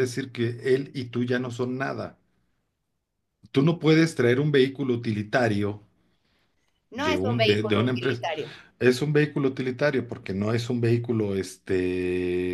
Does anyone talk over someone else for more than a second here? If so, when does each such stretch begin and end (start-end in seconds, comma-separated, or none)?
7.0-8.2